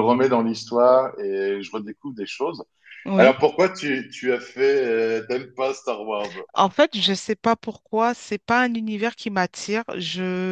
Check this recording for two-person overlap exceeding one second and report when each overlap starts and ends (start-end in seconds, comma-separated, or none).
none